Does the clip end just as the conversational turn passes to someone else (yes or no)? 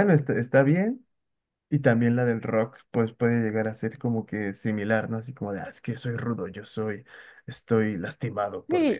yes